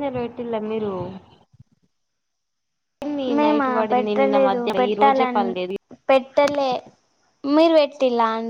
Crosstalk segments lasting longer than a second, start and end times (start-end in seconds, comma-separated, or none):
3.3-5.4